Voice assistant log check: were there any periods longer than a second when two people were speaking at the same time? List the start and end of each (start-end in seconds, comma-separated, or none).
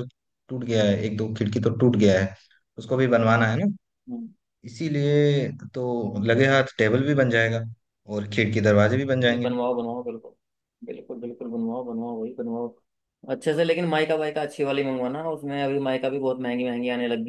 none